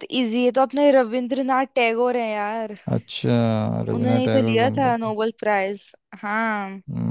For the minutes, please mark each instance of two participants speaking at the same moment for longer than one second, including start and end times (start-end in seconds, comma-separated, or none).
3.9-5.1